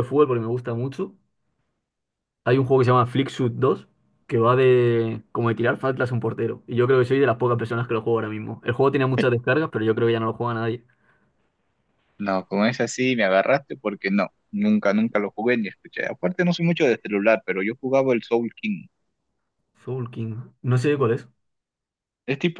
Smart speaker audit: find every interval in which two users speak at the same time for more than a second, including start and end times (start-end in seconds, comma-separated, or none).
none